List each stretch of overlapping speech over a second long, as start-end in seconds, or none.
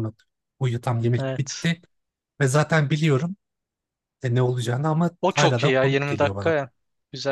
5.2-6.5